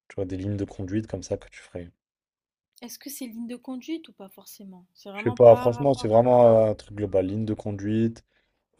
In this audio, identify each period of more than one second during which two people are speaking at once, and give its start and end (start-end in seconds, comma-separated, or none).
5.1-6.4